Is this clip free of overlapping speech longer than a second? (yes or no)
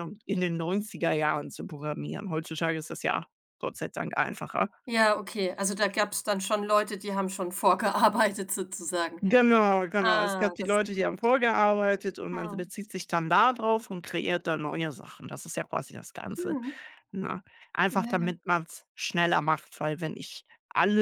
no